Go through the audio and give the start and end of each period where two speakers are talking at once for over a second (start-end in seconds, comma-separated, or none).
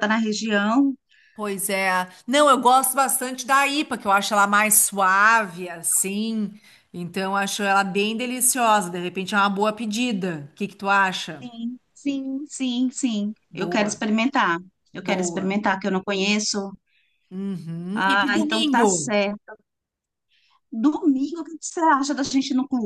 17.9-19.1